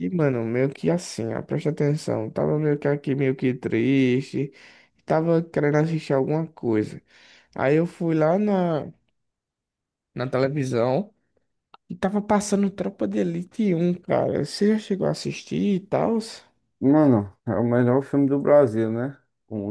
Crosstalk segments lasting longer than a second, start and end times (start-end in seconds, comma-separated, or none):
none